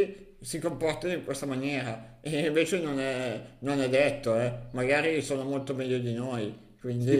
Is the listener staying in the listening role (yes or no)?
no